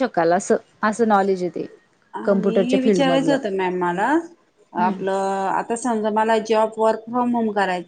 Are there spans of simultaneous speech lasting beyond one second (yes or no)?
no